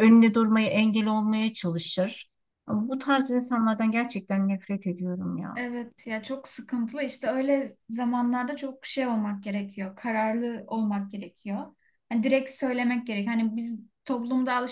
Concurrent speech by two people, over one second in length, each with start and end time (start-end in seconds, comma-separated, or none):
none